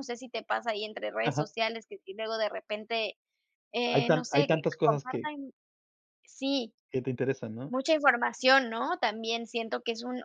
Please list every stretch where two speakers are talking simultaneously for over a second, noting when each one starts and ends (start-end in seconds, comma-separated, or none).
3.9-5.3